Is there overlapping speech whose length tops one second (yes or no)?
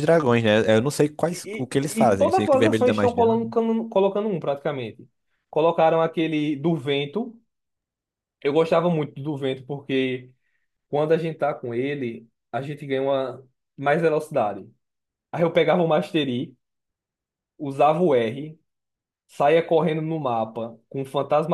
yes